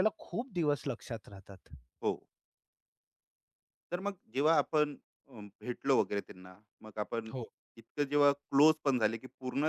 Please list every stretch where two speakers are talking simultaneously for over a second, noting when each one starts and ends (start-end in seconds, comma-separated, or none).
none